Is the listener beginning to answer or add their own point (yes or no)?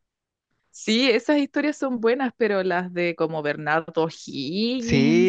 yes